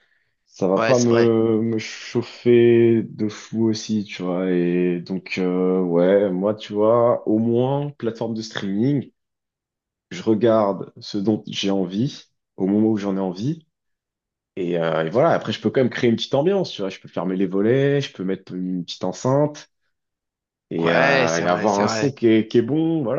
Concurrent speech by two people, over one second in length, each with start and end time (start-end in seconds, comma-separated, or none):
20.8-22.1